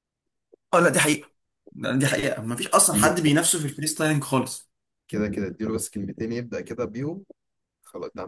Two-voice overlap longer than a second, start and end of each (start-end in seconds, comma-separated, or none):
none